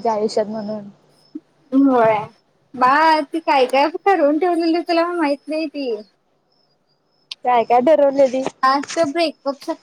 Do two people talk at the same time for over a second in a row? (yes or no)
no